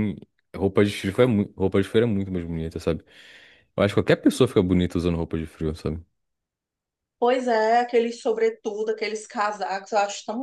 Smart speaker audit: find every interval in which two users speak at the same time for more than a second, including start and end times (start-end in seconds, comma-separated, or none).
none